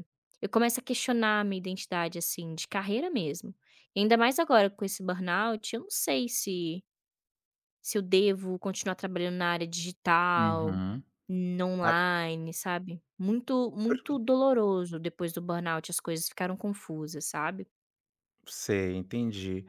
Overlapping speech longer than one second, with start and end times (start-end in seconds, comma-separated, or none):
none